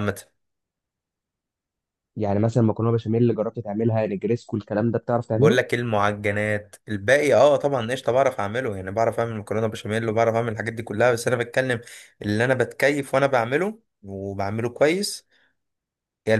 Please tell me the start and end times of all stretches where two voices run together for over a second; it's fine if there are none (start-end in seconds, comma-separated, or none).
none